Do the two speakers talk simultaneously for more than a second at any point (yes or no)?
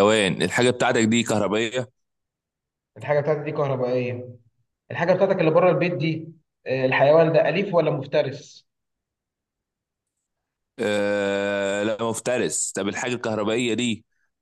no